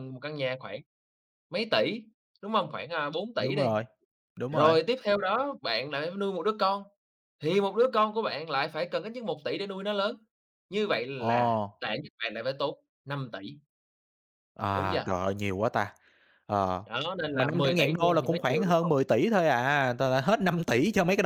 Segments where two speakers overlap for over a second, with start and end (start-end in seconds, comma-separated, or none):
17.3-18.9